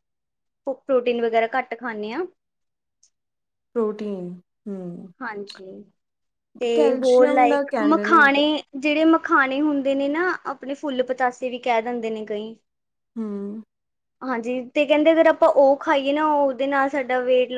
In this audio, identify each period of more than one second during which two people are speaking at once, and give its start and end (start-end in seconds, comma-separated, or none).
7.0-8.4